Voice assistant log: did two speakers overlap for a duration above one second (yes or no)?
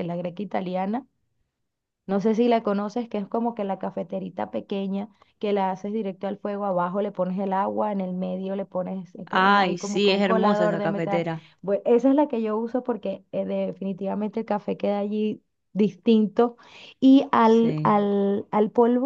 yes